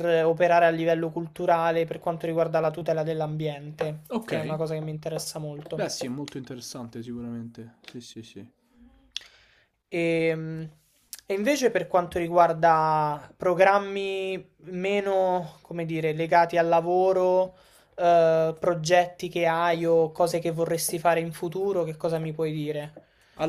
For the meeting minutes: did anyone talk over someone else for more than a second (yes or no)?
no